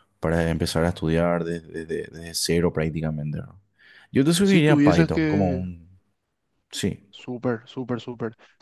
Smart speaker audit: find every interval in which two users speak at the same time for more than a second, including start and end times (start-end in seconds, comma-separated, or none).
4.4-5.6